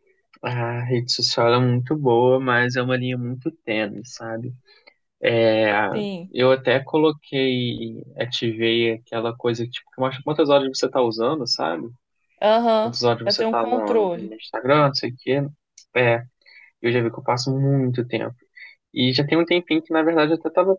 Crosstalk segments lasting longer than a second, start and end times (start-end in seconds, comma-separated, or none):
12.8-14.4